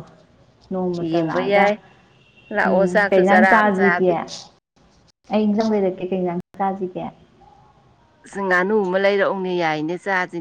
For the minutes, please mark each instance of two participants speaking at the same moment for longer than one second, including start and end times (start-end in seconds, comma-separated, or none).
2.7-4.1